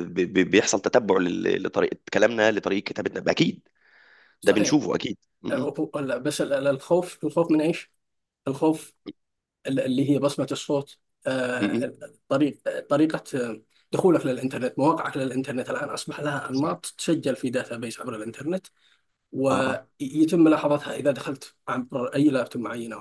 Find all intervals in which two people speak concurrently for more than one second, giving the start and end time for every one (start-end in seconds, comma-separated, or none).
none